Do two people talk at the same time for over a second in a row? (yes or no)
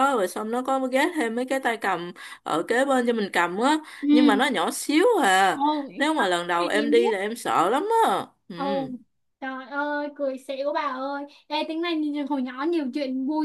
no